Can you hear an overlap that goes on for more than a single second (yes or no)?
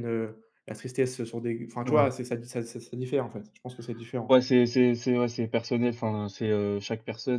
no